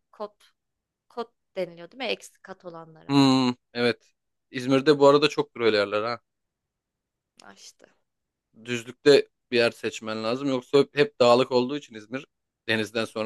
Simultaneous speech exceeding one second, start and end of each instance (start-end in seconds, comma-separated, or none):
none